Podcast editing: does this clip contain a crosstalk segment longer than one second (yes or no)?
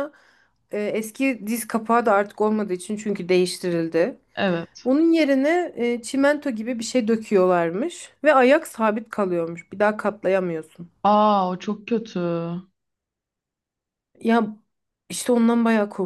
no